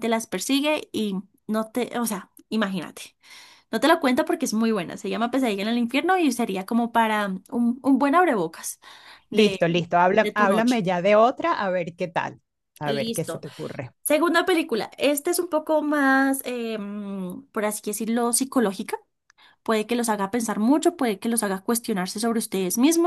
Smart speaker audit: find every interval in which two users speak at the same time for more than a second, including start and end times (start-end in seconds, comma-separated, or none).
9.3-10.8